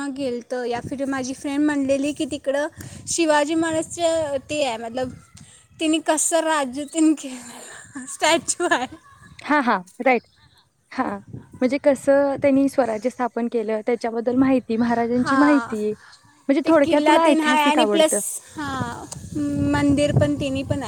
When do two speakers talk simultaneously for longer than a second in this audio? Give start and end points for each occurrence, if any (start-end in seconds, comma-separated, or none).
16.6-18.1